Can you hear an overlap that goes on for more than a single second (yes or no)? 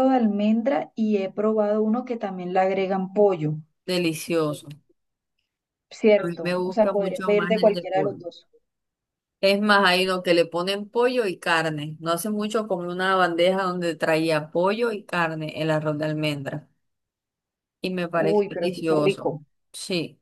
yes